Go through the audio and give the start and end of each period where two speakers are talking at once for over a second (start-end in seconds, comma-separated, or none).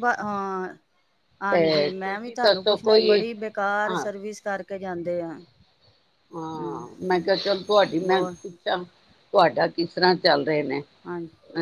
1.5-3.2